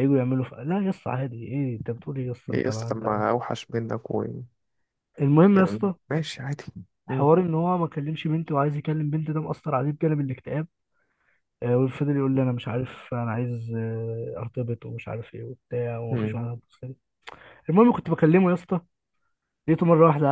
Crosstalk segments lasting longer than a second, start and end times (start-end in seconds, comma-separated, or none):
none